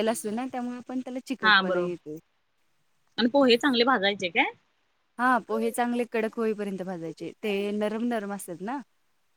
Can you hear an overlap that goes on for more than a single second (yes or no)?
no